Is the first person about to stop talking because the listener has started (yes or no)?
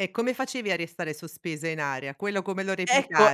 yes